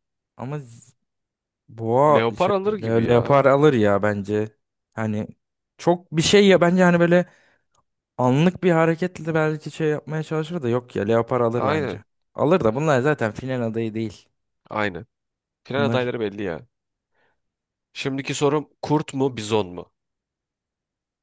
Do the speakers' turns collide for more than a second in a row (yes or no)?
yes